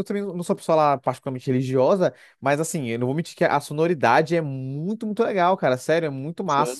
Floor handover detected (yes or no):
no